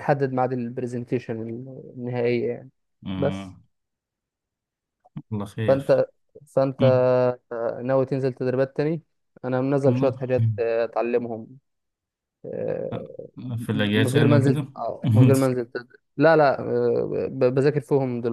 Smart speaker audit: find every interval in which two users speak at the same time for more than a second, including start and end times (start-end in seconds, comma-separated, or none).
13.7-15.3